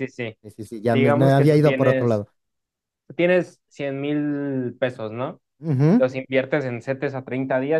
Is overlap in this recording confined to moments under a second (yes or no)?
no